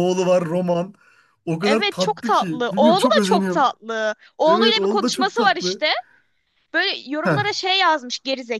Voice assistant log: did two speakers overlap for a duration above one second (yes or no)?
yes